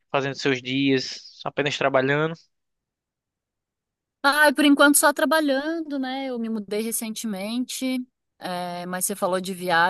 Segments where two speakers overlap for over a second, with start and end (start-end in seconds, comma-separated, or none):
none